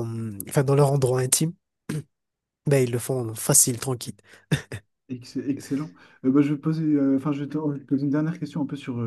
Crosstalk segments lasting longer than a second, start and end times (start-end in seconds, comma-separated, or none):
none